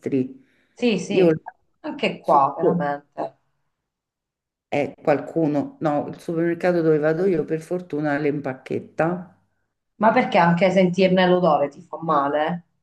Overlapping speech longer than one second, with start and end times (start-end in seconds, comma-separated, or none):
none